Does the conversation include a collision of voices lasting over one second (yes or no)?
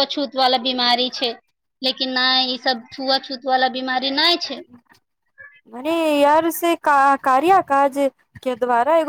no